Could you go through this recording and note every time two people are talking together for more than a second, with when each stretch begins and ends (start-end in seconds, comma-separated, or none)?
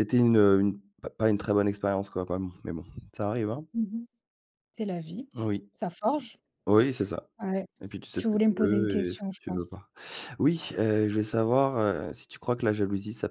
8.2-9.8